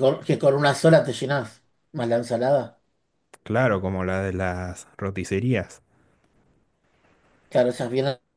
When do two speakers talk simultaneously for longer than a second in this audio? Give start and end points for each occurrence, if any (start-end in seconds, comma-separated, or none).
none